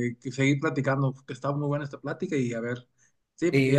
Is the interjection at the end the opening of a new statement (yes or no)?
yes